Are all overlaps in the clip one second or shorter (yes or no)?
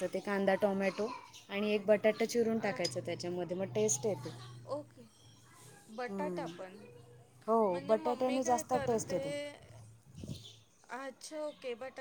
no